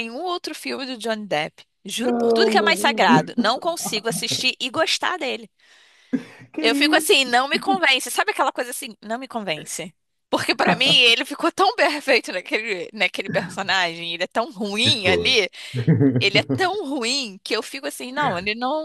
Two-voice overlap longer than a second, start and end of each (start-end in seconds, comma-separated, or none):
2.0-3.5